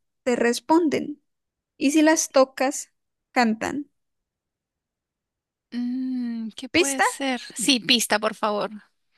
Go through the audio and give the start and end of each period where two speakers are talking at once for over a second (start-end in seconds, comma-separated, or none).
none